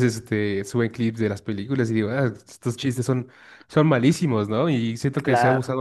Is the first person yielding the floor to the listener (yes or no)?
no